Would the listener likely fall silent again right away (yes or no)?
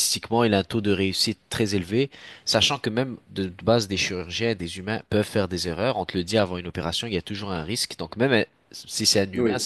yes